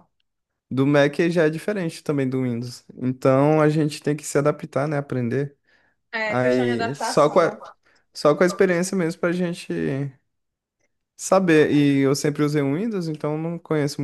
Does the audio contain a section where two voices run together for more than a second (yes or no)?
yes